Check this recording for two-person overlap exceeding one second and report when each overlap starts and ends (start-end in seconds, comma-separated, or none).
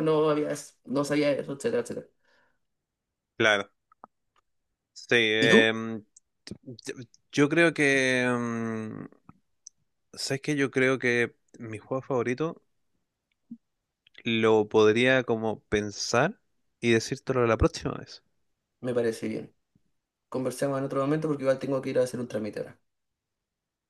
none